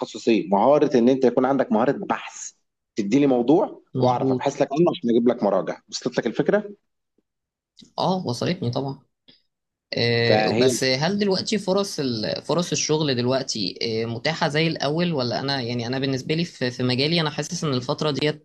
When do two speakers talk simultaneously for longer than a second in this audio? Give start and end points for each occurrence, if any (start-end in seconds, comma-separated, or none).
none